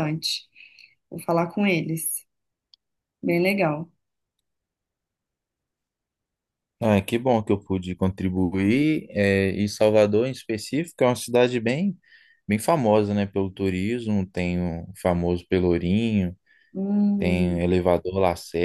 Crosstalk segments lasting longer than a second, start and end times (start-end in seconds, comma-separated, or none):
none